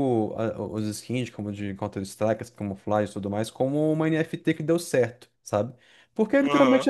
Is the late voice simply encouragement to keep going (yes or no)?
yes